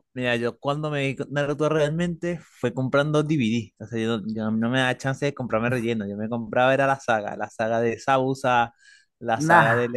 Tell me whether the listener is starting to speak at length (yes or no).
no